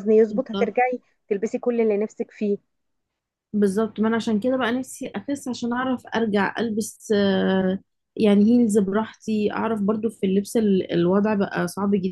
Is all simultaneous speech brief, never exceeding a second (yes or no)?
yes